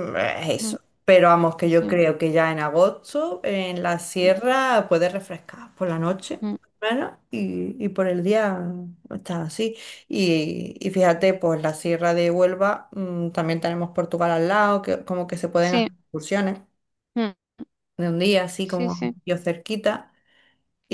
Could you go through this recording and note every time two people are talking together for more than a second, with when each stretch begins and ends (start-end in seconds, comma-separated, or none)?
none